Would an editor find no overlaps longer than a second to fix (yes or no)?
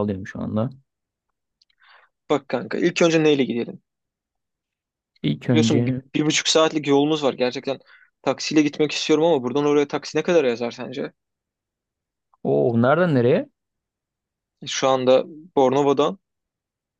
yes